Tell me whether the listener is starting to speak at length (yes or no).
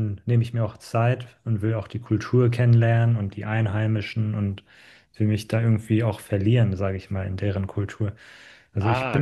no